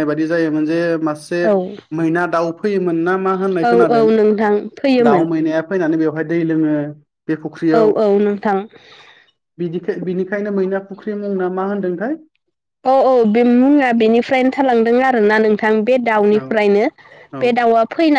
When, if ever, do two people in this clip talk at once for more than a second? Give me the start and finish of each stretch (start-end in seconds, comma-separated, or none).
none